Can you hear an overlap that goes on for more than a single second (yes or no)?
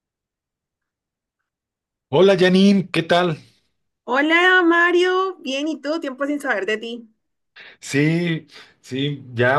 no